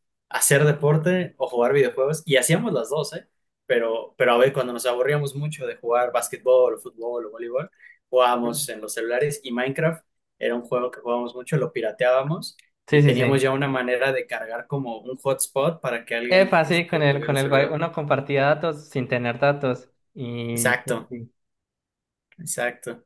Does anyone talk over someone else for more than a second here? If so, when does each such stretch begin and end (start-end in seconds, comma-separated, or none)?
16.3-17.8